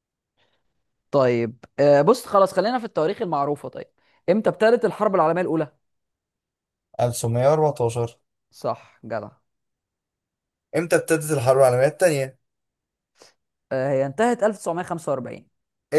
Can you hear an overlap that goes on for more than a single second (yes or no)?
no